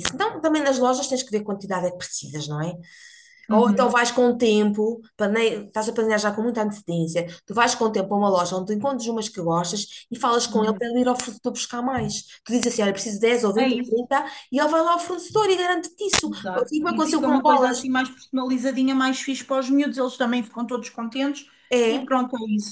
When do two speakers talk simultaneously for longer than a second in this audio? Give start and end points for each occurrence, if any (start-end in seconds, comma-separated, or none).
16.2-17.9